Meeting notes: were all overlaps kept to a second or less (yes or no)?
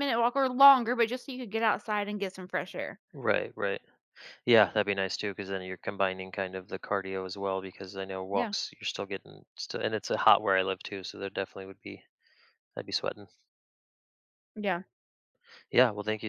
yes